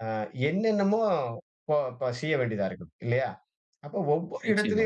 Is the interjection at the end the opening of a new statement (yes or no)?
no